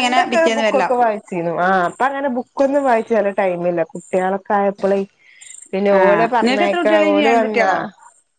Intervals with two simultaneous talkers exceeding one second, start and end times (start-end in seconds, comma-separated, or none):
6.0-7.7